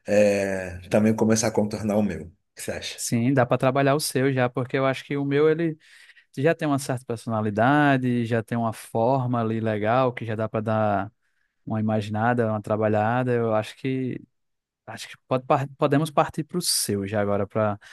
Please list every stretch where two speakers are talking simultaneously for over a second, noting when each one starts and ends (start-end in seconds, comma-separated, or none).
none